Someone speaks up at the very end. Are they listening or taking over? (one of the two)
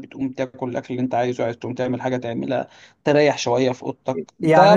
listening